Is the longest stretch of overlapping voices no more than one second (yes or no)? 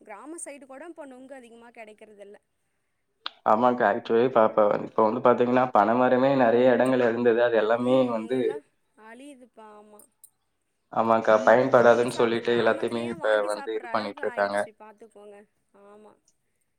no